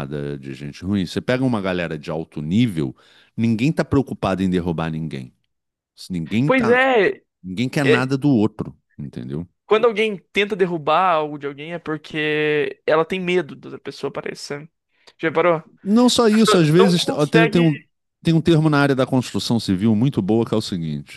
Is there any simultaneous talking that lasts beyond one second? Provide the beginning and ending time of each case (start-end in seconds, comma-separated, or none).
16.3-17.6